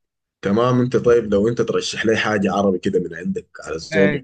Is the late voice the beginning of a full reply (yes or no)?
yes